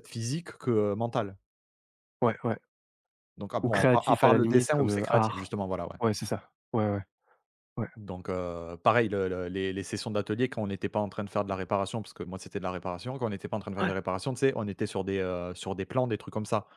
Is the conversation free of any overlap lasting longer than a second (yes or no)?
no